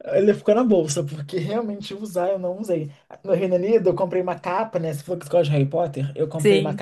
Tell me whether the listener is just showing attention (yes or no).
yes